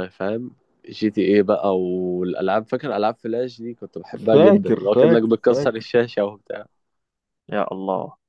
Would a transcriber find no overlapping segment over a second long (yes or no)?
no